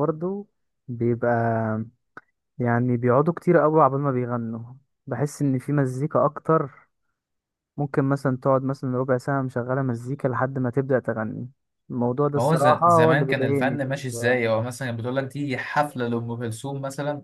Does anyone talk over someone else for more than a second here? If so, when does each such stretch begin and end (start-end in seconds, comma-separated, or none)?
12.4-14.4